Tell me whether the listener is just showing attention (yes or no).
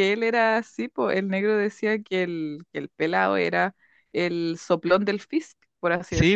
no